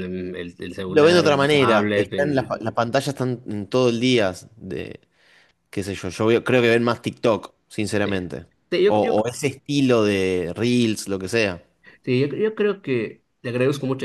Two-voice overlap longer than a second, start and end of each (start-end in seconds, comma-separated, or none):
0.9-2.5